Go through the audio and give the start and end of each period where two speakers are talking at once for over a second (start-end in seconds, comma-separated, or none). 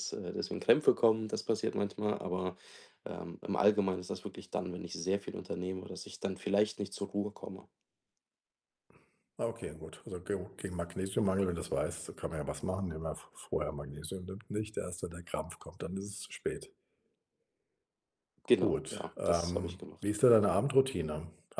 18.6-20.1